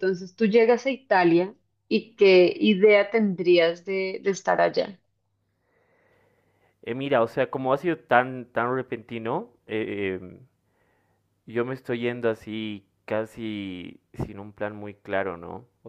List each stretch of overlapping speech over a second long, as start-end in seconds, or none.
none